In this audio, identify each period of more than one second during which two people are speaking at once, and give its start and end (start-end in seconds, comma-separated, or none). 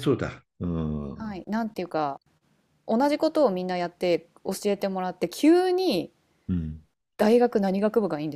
none